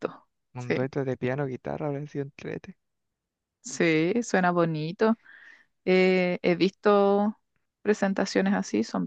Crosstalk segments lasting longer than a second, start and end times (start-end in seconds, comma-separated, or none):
none